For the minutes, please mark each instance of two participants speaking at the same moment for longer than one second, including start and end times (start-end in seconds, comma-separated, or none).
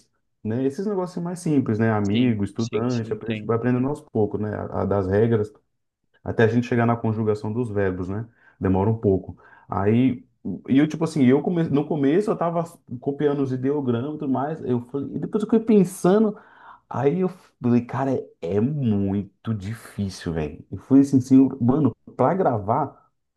2.0-3.6